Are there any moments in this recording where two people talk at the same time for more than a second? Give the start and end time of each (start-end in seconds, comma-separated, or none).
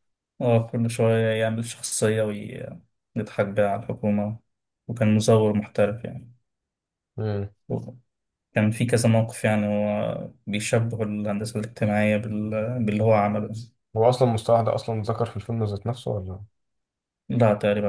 none